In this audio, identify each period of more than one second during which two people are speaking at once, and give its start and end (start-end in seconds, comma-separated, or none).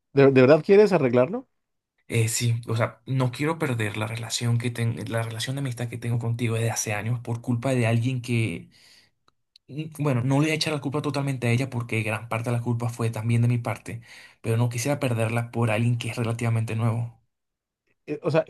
none